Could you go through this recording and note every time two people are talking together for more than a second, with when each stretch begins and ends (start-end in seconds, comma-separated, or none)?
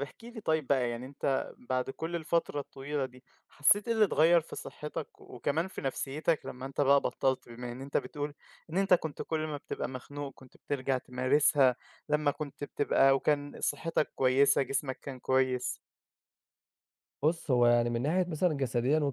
none